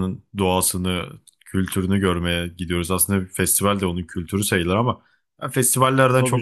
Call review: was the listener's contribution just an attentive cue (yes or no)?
yes